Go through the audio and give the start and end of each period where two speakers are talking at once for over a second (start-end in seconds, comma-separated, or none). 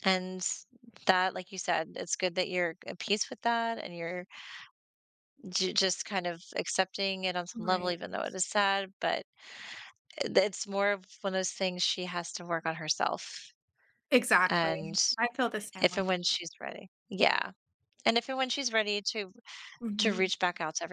none